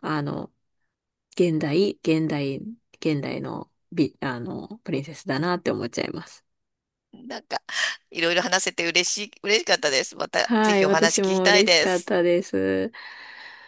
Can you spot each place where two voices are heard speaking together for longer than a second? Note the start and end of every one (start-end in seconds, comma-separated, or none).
10.4-12.1